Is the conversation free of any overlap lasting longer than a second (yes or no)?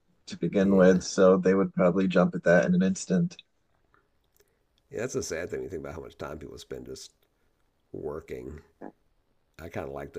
yes